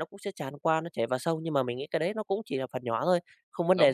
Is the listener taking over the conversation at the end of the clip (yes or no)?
yes